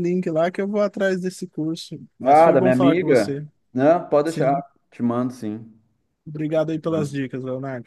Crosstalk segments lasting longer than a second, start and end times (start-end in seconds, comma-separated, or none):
2.2-3.5